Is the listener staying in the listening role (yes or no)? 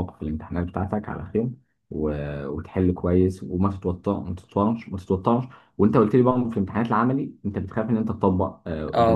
yes